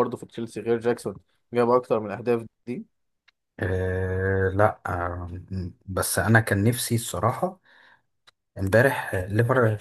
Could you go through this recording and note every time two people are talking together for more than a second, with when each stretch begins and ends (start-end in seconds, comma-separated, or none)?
none